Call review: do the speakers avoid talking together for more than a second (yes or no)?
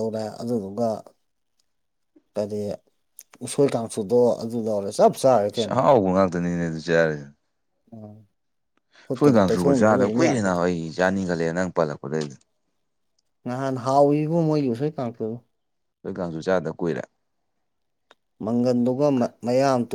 no